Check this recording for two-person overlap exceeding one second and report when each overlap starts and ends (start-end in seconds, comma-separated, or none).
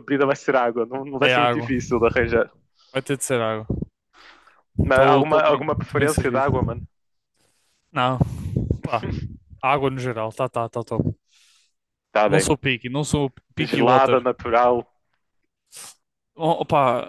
4.8-6.5